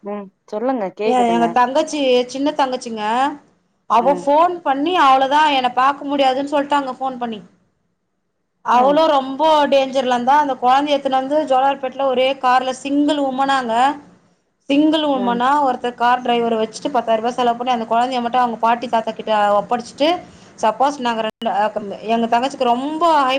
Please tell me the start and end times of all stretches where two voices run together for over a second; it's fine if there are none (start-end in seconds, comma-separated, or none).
none